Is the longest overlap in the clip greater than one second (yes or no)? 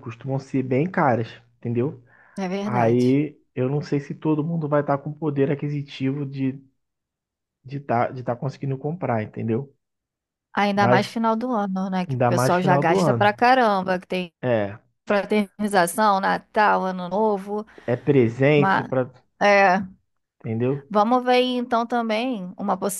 yes